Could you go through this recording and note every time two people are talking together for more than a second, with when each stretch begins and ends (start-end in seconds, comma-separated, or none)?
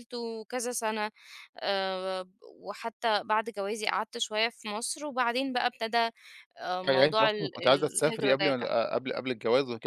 6.9-8.7